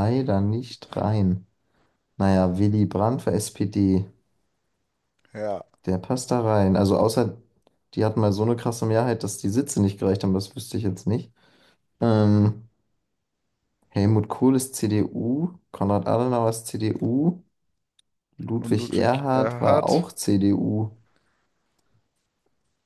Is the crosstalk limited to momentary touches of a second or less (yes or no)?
no